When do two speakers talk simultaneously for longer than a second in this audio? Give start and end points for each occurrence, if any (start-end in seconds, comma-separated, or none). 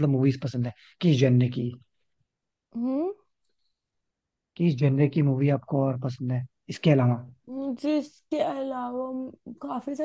none